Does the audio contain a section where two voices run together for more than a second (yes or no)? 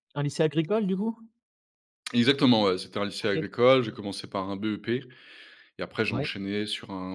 no